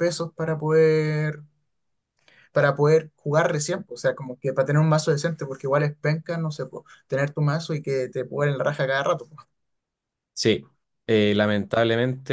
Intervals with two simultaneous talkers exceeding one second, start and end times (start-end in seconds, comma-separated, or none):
none